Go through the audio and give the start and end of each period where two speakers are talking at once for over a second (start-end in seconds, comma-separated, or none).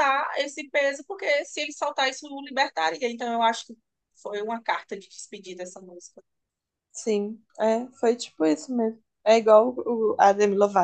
none